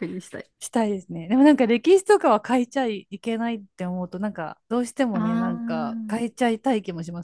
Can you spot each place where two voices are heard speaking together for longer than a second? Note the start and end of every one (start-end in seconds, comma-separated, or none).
5.1-6.3